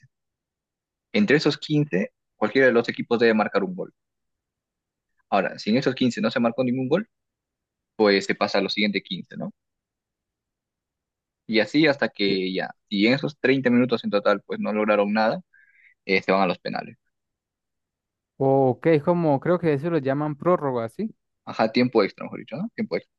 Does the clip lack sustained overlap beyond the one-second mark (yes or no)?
yes